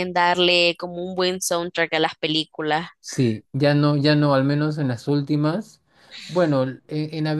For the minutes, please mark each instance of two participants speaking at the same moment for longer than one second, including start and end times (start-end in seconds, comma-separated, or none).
none